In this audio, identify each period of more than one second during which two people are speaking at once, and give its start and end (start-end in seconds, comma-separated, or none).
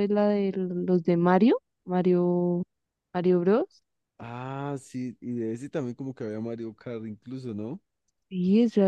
none